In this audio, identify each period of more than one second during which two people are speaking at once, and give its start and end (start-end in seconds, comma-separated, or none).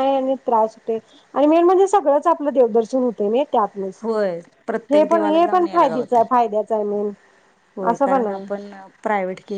4.9-6.3